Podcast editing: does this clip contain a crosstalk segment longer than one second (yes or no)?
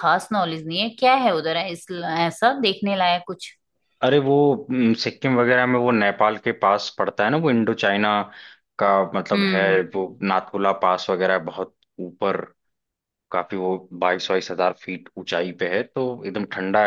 no